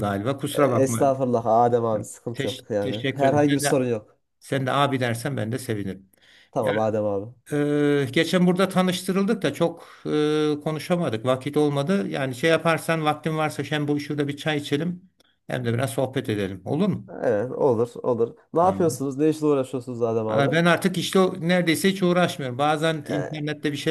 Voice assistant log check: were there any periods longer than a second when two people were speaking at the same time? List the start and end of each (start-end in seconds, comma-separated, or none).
1.9-3.9